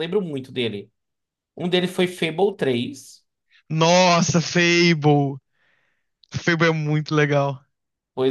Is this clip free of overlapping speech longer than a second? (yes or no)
yes